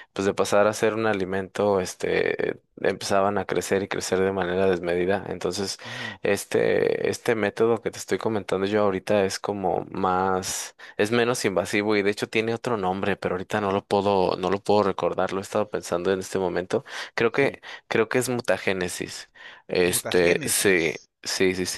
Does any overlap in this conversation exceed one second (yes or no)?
yes